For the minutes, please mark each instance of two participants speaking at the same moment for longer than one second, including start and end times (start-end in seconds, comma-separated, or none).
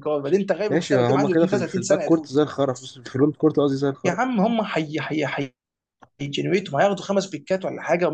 0.7-2.3